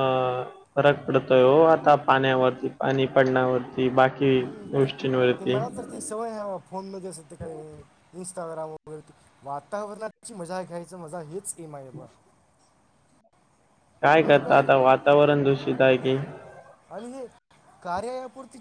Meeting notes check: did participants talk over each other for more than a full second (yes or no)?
no